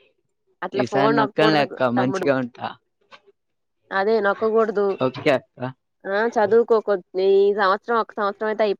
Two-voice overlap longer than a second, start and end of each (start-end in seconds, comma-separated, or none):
0.8-2.3